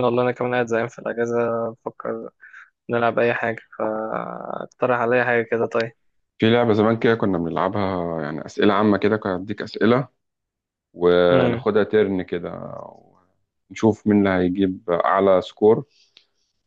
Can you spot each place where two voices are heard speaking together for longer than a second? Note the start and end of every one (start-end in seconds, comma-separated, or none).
none